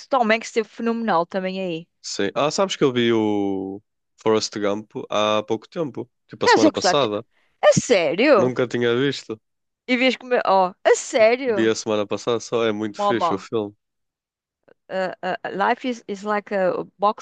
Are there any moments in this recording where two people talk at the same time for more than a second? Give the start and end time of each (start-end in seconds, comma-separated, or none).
none